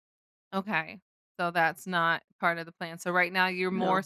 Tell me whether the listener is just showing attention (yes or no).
yes